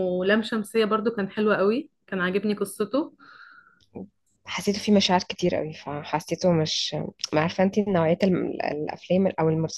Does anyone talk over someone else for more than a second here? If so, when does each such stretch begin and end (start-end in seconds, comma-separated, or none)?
none